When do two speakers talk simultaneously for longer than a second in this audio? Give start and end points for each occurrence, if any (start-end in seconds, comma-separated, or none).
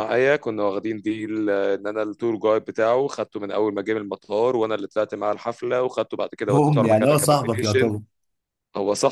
6.5-7.9